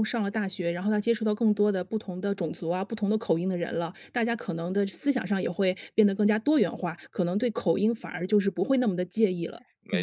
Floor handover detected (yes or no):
yes